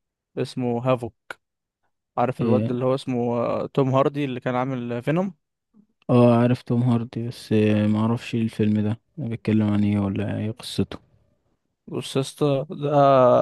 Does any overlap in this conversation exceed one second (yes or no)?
no